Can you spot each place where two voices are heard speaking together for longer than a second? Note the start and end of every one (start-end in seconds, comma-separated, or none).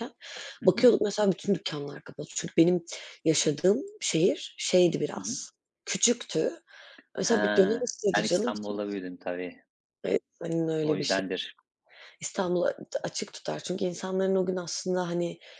7.2-8.8